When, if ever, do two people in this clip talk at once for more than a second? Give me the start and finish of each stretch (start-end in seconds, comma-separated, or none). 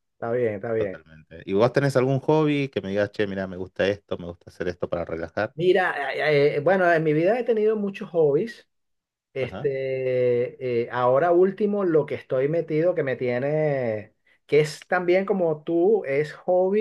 none